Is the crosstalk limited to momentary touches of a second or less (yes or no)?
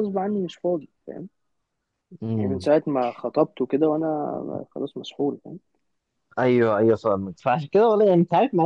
yes